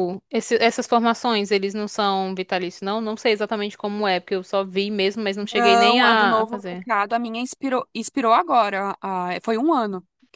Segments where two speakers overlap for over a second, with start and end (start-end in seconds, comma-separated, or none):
5.5-6.9